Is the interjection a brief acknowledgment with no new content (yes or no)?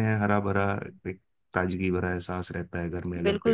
no